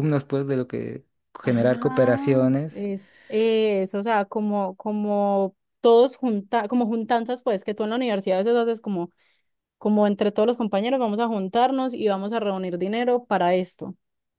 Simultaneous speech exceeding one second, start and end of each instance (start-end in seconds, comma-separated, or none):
1.4-2.9